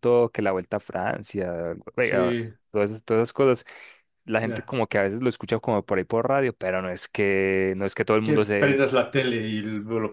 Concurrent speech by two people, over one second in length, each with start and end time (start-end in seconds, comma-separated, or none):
none